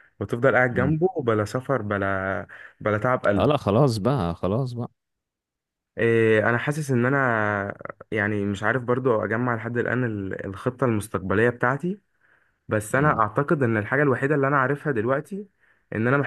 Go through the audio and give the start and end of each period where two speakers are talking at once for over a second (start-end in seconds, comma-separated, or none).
none